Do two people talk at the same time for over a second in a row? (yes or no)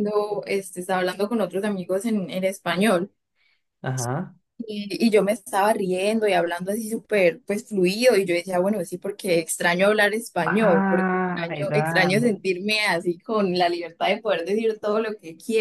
yes